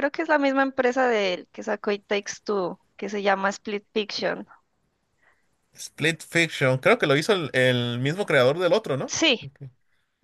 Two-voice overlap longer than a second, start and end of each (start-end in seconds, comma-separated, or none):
none